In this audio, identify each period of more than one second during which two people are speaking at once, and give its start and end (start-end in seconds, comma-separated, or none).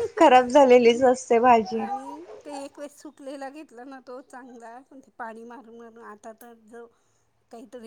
none